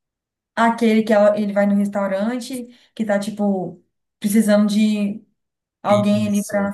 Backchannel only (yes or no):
no